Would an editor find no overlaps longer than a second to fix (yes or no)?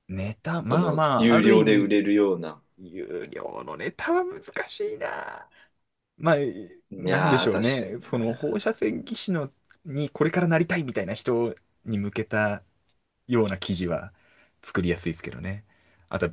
no